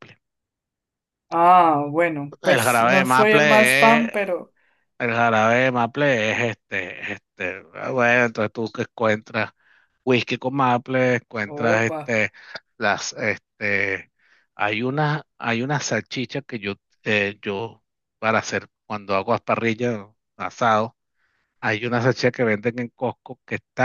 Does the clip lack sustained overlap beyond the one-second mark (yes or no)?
no